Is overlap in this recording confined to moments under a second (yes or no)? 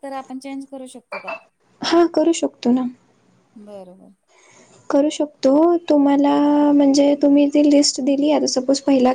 yes